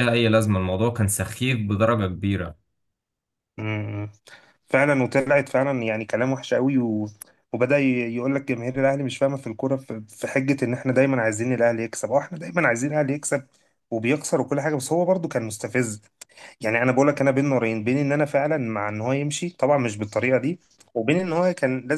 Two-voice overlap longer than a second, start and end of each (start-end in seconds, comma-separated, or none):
none